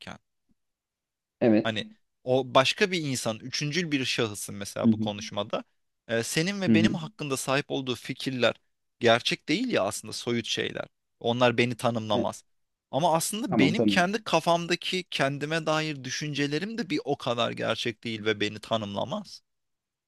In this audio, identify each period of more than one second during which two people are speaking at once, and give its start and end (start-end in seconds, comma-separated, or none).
none